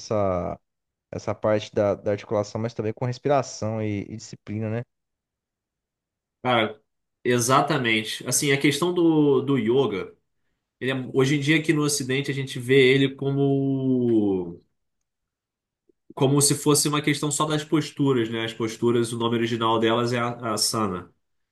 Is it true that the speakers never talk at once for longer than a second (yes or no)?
yes